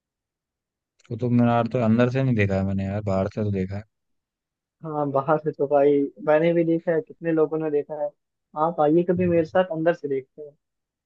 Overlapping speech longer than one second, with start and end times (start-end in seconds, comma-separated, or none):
none